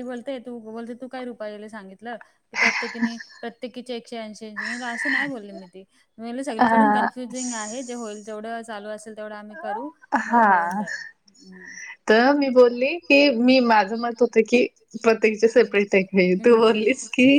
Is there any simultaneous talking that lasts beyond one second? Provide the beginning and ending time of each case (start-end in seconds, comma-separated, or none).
none